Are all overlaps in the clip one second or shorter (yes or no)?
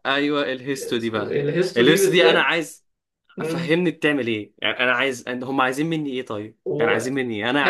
no